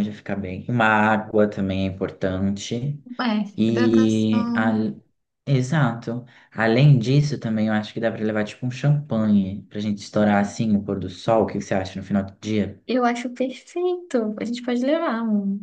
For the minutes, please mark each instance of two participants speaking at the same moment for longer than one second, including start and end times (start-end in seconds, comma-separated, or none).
3.6-4.8